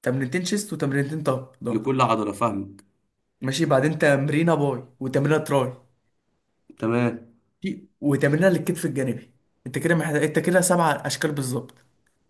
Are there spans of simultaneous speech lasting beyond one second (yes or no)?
no